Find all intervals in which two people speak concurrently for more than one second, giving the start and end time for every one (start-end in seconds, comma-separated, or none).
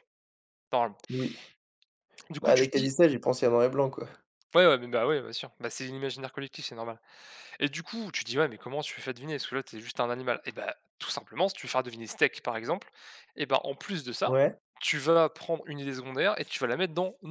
none